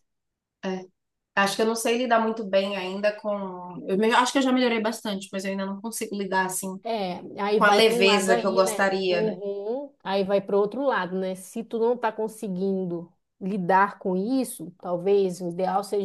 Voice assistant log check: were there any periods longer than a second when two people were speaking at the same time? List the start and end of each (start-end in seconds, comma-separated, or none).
7.5-9.4